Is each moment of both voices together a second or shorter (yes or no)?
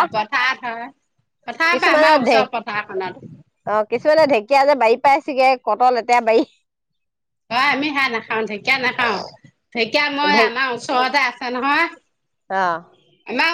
no